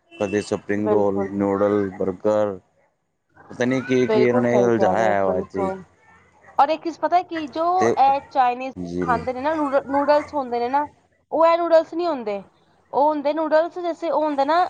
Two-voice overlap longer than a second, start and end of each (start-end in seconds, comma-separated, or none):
4.1-5.7